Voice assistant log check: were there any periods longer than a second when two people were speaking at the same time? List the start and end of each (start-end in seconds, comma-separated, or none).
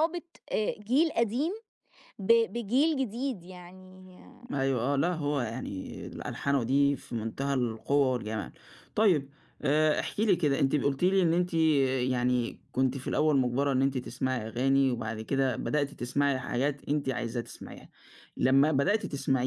none